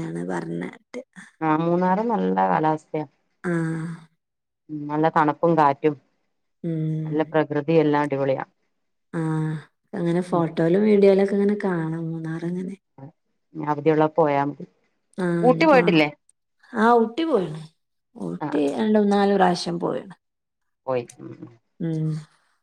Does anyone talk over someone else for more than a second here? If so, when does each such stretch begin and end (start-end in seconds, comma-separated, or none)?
none